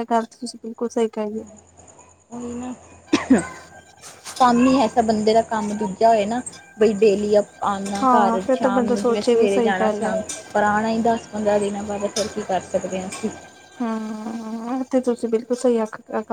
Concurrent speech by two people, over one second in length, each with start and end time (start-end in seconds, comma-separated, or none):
8.0-10.1